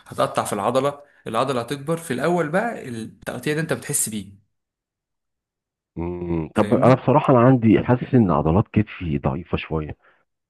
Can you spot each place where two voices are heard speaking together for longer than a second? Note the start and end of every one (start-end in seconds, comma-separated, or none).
none